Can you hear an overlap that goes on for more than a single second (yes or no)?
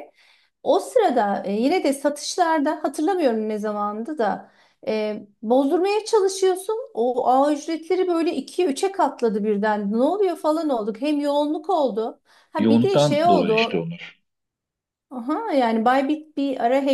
yes